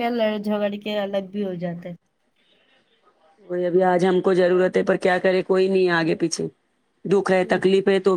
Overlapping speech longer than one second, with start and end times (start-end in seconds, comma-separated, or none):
none